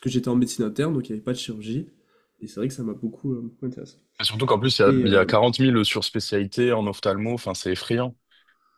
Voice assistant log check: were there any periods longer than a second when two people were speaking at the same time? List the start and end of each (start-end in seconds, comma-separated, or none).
none